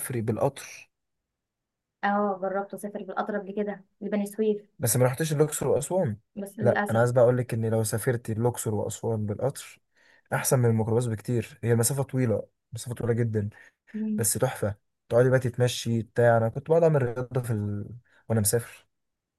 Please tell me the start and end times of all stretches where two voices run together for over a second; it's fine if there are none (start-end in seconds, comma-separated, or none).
none